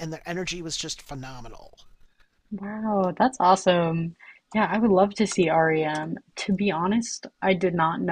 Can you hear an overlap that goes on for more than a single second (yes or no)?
no